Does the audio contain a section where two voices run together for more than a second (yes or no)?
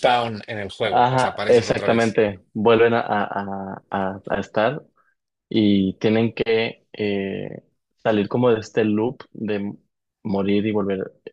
yes